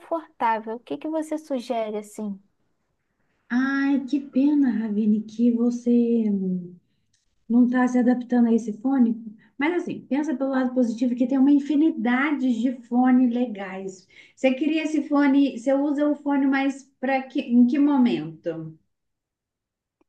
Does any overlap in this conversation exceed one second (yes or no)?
no